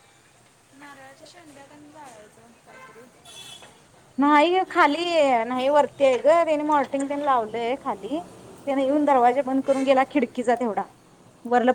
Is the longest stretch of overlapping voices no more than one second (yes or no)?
yes